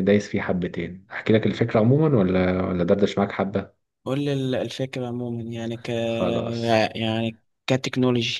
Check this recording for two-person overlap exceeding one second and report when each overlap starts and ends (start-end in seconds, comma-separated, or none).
none